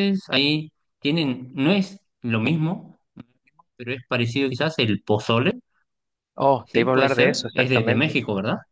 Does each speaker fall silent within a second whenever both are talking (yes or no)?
no